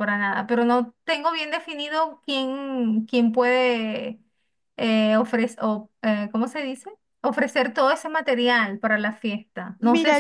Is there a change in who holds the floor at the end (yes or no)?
yes